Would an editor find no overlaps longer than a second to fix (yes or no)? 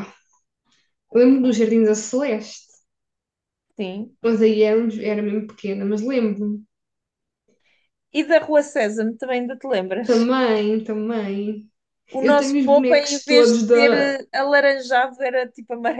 no